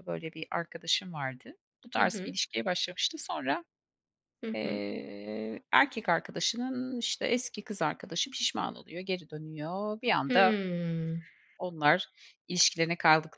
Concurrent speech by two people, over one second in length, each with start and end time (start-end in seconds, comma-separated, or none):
none